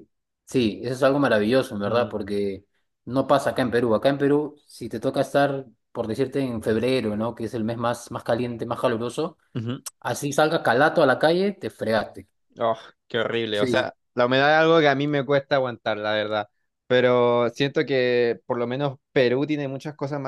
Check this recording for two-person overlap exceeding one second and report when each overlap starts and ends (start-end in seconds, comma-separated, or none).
none